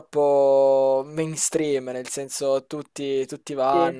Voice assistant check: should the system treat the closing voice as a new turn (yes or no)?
no